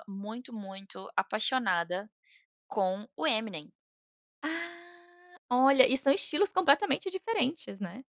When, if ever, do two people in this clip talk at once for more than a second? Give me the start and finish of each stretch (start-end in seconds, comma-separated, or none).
none